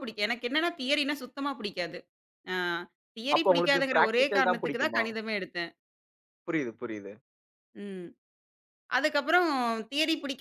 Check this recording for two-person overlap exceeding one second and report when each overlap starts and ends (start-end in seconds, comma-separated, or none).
3.4-5.0